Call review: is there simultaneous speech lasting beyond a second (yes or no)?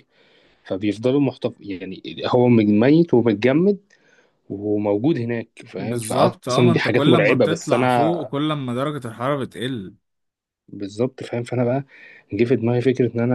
yes